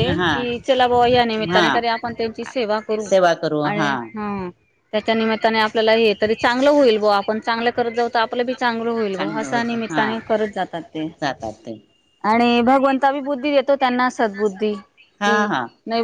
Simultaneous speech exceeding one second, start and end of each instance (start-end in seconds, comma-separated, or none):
9.2-11.1